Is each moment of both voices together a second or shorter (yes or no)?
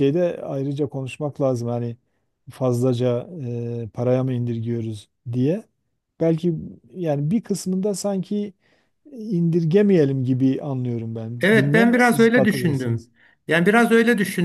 no